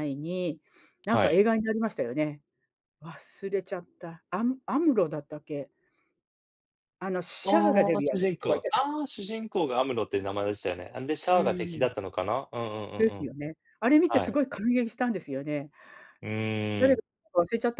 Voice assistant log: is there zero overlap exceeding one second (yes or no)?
no